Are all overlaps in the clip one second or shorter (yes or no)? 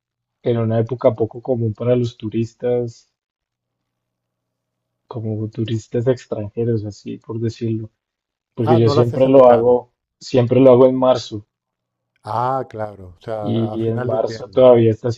no